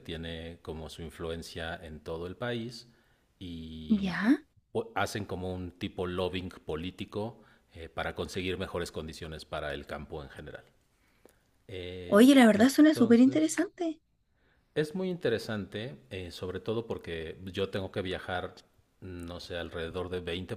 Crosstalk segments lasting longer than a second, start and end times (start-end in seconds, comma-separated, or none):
12.1-13.7